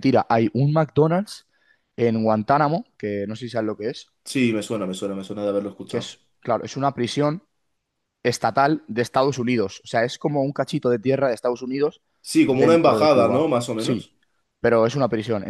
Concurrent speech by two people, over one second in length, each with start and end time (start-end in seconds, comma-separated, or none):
12.4-14.1